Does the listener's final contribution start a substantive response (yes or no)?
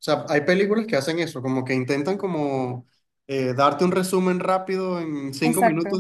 no